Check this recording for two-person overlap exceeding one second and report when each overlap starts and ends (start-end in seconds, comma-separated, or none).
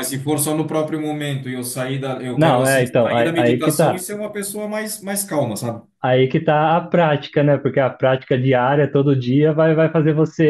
2.4-4.0